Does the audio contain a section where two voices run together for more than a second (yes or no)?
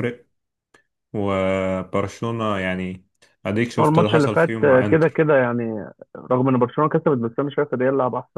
yes